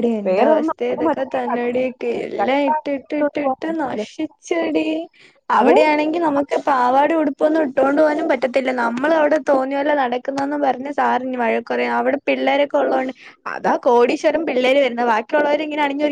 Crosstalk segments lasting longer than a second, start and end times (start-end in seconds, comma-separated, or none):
2.4-4.0